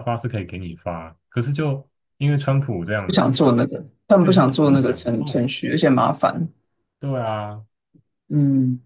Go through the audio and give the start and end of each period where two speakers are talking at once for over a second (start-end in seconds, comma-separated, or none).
4.2-5.5